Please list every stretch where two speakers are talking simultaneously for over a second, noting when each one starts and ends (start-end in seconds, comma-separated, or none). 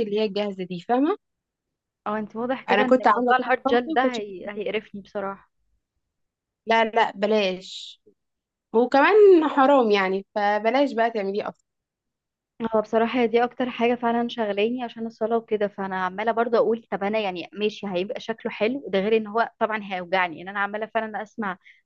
2.7-4.6